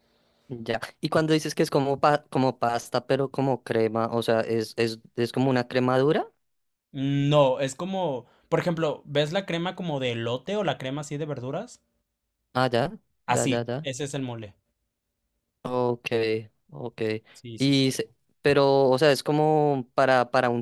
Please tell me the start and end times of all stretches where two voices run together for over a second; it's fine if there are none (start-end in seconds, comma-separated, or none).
none